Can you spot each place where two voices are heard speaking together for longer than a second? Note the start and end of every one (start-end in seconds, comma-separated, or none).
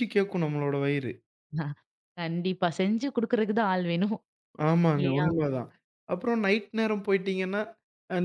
none